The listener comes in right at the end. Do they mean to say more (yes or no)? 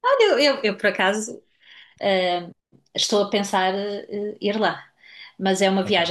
no